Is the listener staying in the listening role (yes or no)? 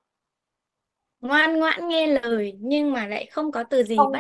no